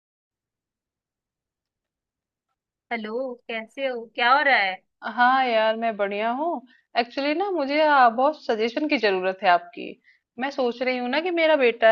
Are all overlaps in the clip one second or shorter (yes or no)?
yes